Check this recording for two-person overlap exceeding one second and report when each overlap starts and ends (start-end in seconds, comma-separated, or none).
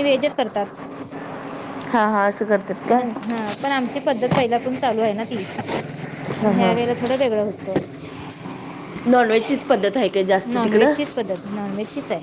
none